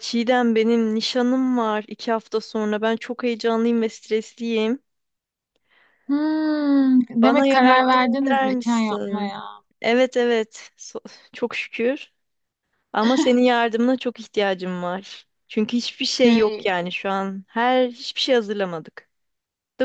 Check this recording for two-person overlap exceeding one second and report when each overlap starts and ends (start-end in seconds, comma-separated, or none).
7.2-9.3